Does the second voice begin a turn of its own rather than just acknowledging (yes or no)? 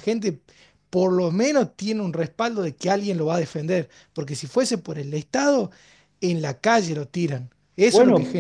yes